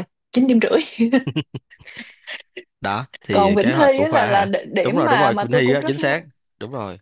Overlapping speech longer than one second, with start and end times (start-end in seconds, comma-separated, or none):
3.3-6.3